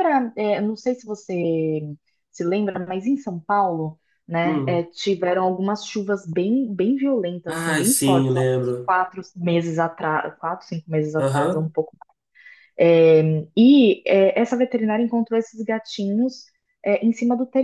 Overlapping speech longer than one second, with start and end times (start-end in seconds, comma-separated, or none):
7.5-8.9